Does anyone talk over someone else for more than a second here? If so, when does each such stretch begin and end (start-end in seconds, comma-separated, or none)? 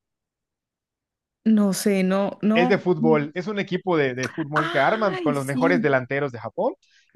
4.5-5.9